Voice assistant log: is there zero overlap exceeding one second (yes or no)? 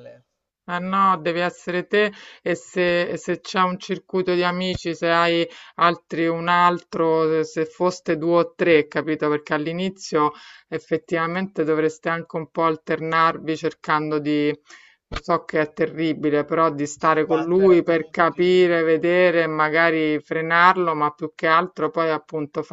no